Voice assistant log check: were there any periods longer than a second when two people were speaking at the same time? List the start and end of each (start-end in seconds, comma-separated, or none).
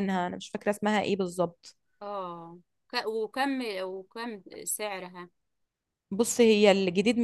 none